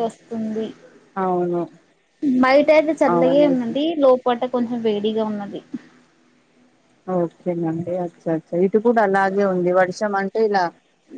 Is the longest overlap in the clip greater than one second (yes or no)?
no